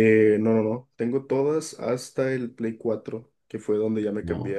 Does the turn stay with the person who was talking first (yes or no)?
yes